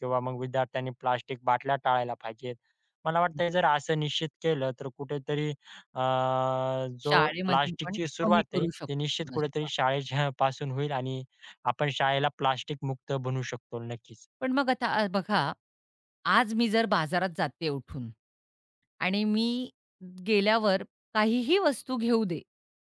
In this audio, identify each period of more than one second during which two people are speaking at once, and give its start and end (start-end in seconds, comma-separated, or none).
7.1-9.7